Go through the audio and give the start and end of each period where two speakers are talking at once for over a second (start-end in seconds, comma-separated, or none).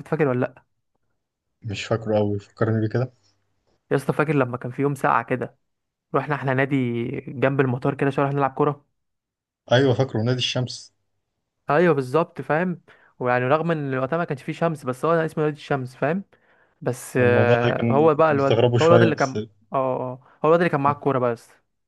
17.2-19.4